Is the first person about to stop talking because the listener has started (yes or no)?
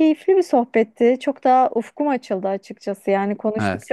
no